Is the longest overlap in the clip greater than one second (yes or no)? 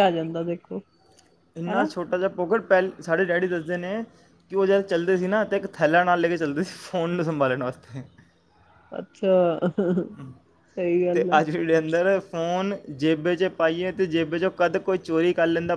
no